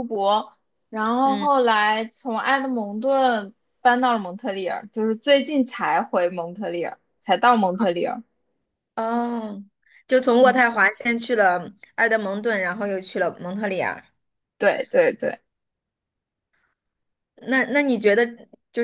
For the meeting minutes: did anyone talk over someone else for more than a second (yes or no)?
no